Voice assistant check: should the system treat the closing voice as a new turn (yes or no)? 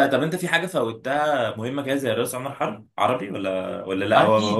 yes